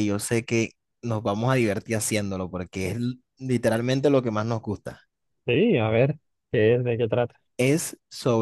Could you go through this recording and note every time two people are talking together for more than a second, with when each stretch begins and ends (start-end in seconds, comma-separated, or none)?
none